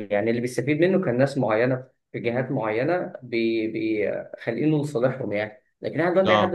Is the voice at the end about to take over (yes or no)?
no